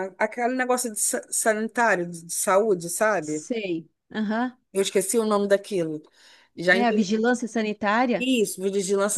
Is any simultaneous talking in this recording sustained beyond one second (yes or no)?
no